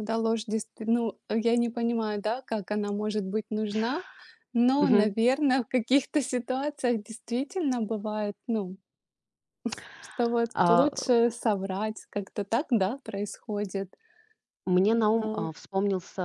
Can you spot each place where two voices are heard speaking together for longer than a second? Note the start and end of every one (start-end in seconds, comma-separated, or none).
none